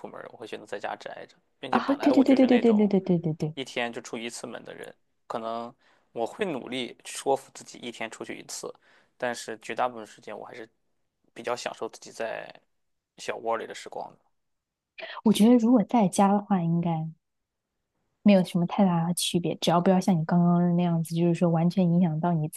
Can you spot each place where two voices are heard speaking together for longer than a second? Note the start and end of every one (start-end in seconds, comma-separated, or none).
1.7-2.9